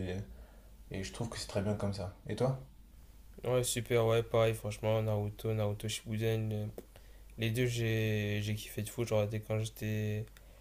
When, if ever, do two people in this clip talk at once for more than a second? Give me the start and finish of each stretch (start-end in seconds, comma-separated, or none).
none